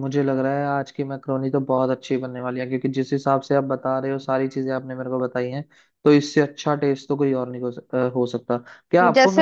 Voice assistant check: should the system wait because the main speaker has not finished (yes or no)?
no